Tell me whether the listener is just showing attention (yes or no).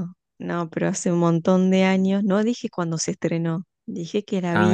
yes